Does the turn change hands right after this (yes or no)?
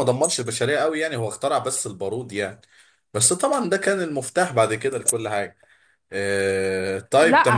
yes